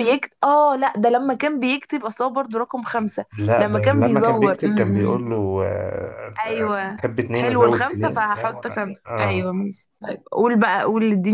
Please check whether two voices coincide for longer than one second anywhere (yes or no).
yes